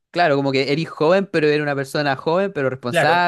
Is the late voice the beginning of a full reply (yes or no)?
yes